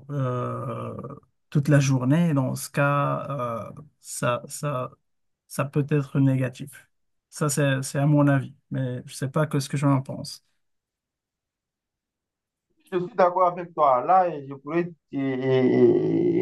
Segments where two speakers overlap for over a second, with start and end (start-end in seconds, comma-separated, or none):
none